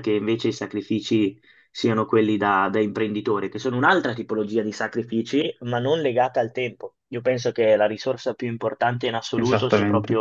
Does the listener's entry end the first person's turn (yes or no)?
no